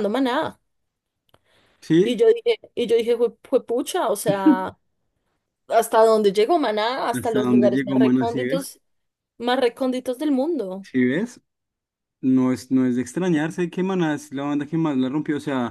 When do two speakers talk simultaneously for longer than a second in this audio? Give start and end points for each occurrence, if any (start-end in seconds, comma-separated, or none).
7.1-8.7